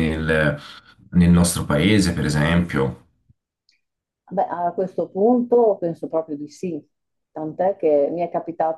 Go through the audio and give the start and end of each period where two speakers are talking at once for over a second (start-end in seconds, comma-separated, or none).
none